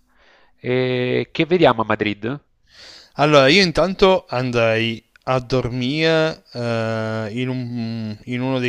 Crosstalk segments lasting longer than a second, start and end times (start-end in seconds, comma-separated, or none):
none